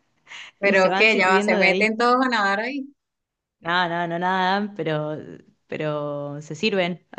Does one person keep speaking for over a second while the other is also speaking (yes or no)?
yes